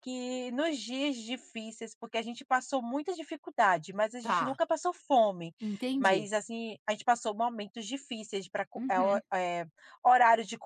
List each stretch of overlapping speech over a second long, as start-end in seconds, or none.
none